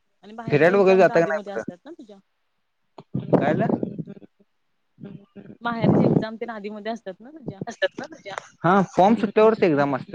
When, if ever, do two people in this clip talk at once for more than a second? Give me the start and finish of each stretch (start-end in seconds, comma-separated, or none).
0.5-1.8